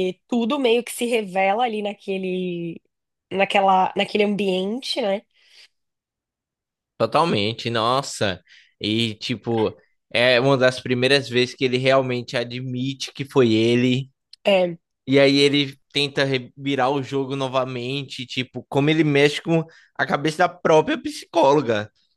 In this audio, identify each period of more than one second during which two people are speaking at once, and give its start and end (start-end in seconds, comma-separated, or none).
none